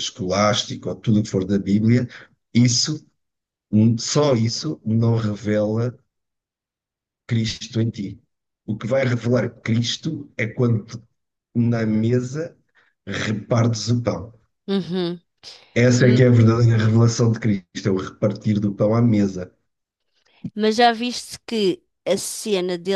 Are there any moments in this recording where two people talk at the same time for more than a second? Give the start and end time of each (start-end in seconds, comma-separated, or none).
none